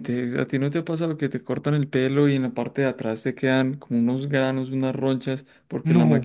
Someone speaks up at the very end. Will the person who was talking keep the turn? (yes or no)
yes